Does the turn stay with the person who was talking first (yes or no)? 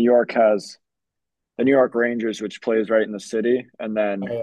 yes